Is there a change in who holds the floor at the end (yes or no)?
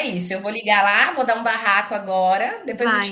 yes